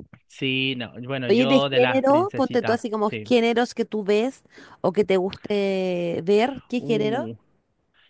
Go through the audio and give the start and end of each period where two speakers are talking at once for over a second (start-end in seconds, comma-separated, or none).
1.3-3.3